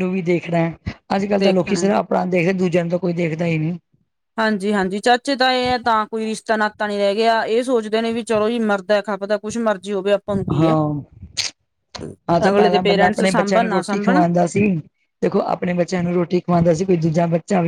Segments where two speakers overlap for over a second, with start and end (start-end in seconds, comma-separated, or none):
12.5-14.2